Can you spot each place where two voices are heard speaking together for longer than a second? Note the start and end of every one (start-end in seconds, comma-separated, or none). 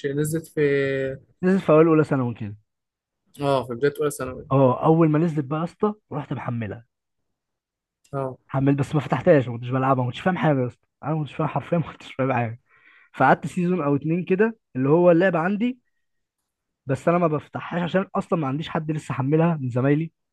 none